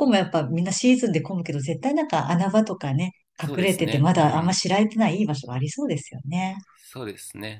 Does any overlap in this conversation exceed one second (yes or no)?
yes